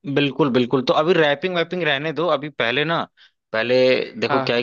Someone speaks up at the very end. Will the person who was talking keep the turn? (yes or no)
yes